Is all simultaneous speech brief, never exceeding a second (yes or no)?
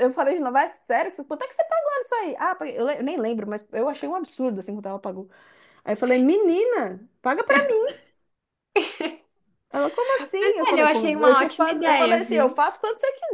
no